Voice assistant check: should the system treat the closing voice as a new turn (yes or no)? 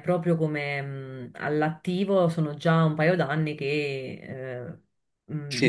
yes